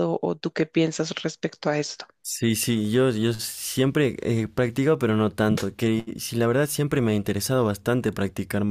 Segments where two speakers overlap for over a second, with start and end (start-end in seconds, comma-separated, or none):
none